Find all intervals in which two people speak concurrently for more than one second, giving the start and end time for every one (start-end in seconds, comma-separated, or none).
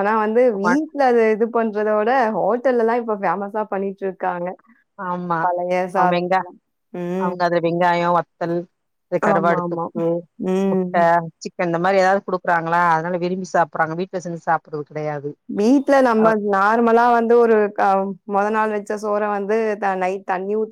none